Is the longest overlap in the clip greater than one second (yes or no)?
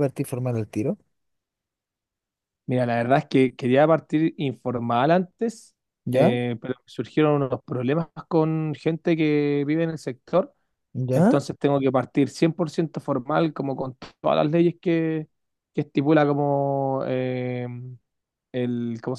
no